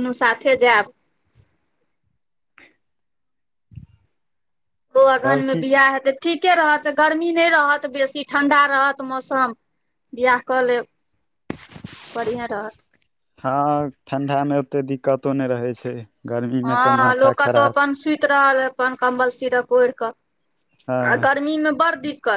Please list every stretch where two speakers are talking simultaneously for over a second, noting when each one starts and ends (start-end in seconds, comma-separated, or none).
none